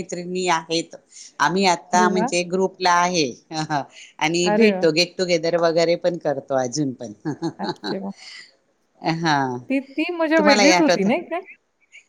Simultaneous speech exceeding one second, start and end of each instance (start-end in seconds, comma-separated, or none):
none